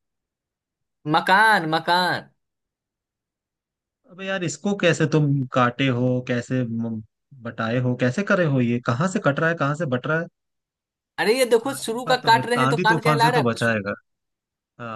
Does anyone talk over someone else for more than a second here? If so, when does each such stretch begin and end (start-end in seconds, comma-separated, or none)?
11.7-13.7